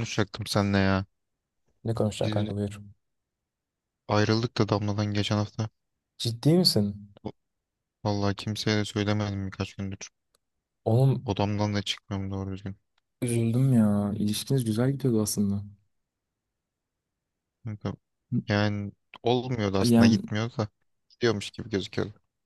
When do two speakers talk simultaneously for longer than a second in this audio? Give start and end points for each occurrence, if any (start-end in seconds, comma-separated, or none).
none